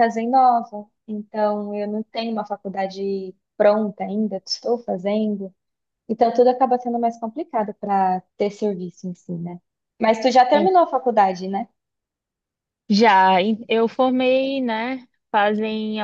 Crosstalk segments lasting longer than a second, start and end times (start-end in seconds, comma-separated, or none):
none